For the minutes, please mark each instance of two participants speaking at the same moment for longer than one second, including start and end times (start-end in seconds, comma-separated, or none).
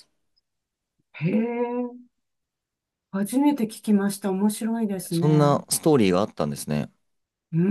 none